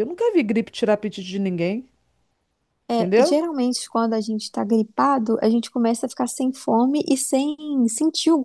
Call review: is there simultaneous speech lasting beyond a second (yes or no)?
no